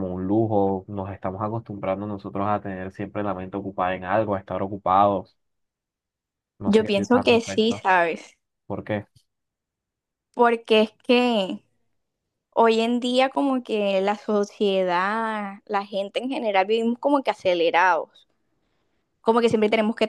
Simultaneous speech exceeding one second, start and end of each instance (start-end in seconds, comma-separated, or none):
6.6-7.8